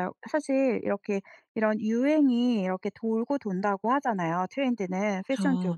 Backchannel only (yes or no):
yes